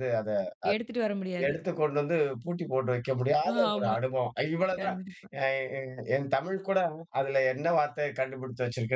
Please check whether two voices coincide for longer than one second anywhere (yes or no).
no